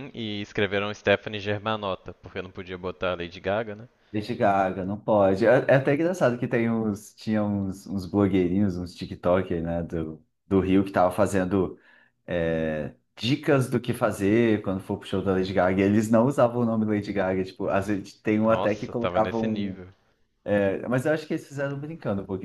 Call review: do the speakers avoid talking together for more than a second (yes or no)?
no